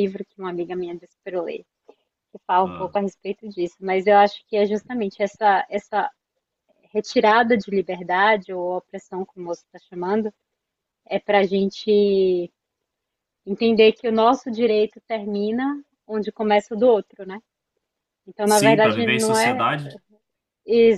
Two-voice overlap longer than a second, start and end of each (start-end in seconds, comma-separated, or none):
18.4-19.7